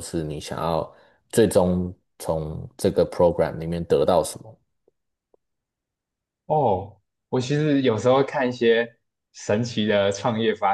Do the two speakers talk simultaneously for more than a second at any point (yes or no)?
no